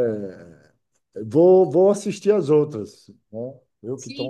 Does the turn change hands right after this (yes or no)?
yes